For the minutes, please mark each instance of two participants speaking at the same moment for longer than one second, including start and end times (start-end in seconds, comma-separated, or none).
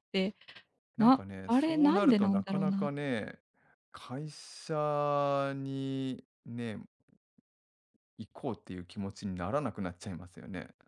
1.0-2.9